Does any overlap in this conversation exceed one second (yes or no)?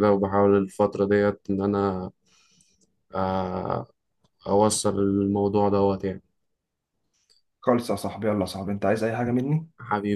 no